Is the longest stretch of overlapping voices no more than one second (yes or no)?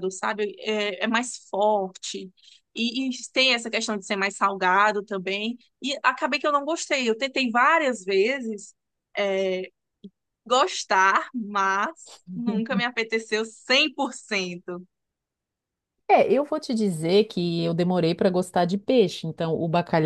yes